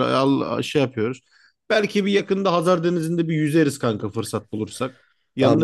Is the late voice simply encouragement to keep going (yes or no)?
no